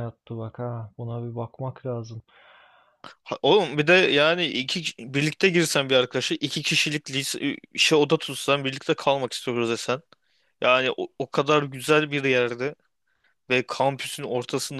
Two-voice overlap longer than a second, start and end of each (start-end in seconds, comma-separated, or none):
none